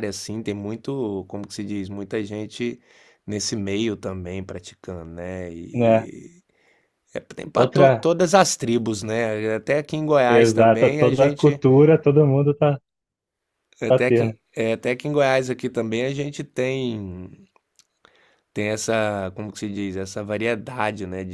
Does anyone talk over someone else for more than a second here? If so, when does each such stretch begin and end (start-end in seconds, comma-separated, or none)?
10.3-11.6